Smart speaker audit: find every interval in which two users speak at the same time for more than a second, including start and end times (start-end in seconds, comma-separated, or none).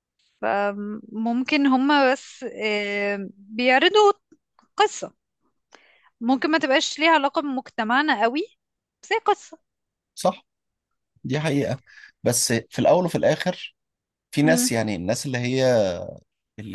none